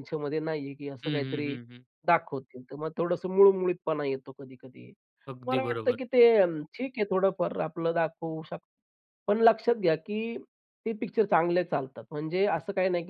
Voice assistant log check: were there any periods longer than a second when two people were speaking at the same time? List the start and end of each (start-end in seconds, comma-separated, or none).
none